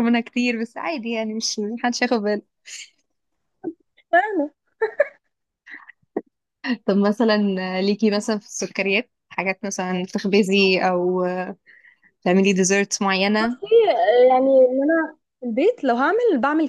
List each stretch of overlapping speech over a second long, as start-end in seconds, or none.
none